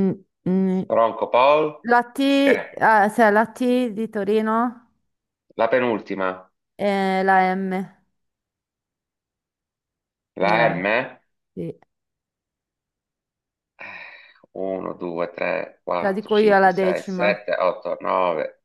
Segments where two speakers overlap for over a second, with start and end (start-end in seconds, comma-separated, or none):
16.0-17.4